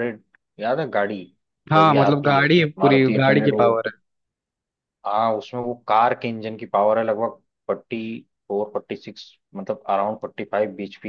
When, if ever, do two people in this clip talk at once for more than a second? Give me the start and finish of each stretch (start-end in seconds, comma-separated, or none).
1.7-3.9